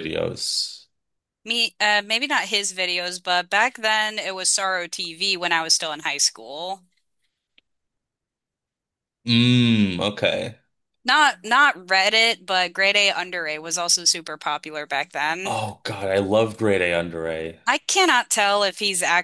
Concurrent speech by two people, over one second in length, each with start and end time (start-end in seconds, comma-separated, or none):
none